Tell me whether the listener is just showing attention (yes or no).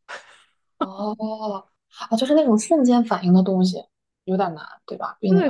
no